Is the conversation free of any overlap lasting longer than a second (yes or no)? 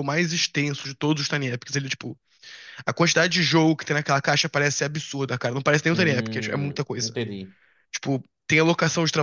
no